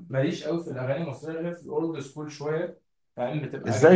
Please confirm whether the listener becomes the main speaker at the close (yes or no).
yes